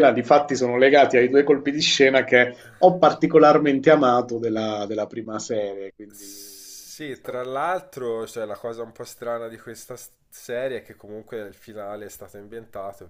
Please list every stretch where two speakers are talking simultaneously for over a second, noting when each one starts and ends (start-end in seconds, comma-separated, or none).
6.1-7.5